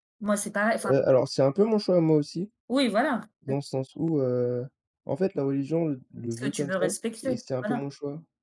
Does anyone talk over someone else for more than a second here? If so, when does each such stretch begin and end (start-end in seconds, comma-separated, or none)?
6.3-7.9